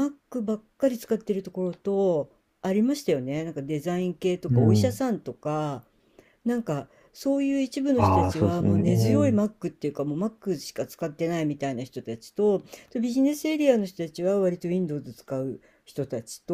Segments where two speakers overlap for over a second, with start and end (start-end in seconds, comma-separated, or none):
8.0-9.4